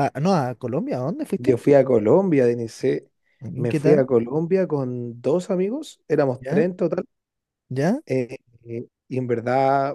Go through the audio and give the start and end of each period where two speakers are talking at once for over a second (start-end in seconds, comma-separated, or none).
none